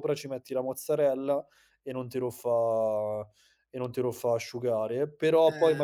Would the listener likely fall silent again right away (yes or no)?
yes